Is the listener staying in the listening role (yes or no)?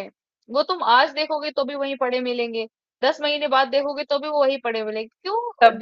no